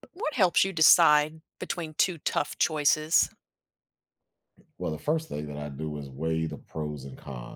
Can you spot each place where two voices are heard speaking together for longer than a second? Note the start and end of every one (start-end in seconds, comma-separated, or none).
none